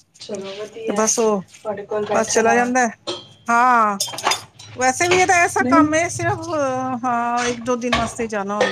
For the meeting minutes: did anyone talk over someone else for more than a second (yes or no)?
no